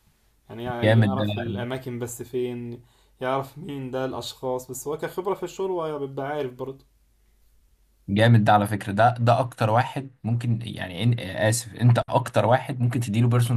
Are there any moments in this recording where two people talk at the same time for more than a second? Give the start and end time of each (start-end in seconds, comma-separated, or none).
none